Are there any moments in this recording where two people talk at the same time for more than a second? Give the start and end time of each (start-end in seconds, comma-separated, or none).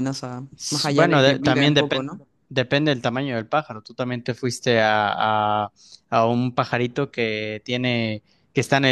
0.6-2.3